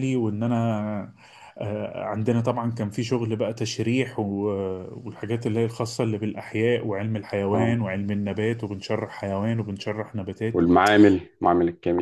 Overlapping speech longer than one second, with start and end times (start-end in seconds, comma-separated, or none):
none